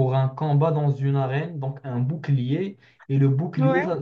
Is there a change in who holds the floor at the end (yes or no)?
no